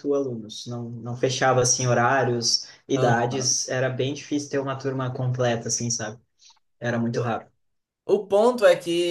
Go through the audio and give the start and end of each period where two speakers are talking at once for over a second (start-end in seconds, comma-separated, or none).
none